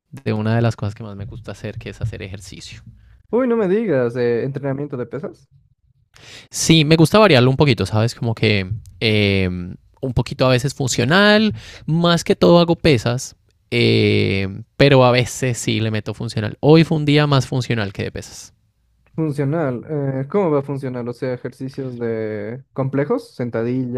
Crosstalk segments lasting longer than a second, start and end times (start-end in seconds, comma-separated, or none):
none